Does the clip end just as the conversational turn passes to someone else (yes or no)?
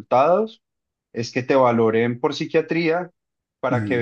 no